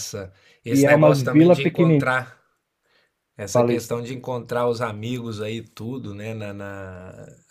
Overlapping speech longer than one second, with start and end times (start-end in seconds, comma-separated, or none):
0.7-2.1